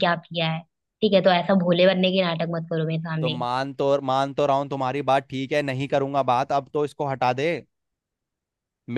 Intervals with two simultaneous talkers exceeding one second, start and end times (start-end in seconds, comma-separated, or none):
none